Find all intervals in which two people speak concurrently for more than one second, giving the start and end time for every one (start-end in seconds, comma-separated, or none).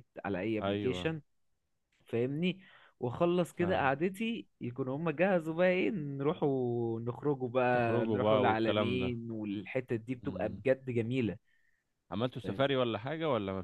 7.7-9.1